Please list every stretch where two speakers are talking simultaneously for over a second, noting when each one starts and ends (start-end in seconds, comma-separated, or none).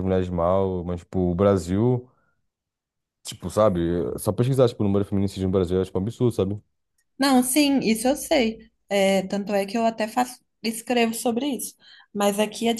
none